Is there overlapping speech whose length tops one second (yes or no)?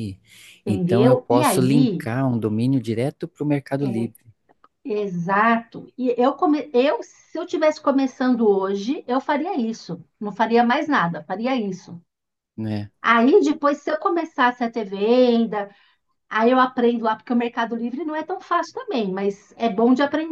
yes